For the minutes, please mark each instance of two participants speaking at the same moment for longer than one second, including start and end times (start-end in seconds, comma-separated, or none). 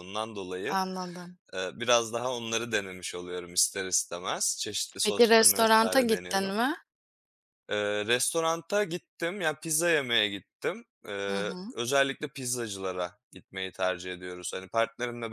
5.0-6.6